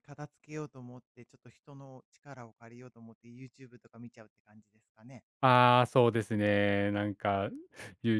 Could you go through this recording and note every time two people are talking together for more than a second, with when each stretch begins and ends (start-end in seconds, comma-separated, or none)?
none